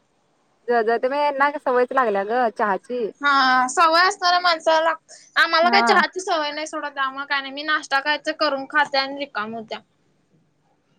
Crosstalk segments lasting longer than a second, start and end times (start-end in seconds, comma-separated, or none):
none